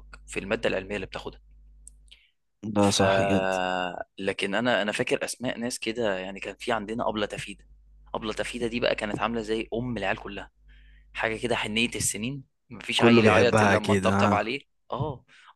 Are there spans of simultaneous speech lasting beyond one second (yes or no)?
yes